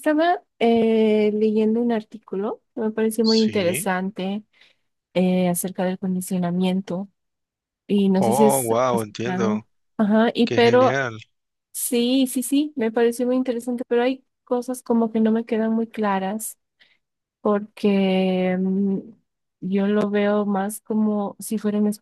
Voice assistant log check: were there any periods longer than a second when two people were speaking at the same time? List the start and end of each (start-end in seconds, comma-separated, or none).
8.2-9.6